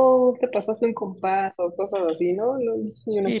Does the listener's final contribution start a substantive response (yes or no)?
yes